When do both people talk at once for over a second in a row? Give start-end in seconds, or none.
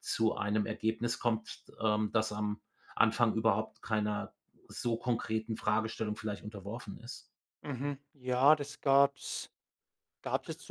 none